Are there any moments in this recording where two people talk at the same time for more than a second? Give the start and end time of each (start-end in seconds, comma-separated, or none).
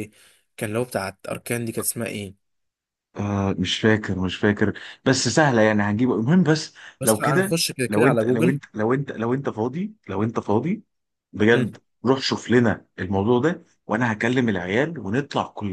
7.0-8.6